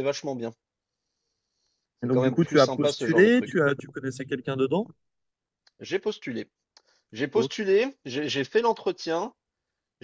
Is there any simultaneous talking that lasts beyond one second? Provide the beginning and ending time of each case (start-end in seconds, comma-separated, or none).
2.0-3.6